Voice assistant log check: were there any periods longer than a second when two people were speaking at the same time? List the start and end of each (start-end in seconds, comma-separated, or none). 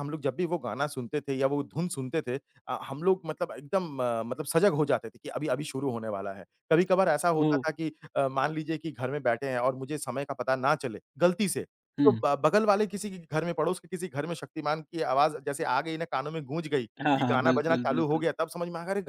17.0-18.3